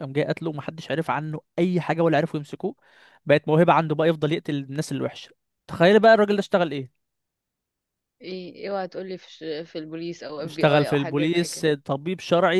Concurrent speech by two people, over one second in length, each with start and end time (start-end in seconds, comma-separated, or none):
10.4-11.7